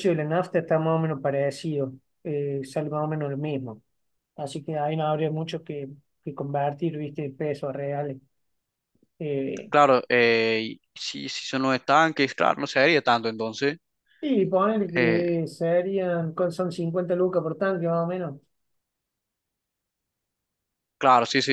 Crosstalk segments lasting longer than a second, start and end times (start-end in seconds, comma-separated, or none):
none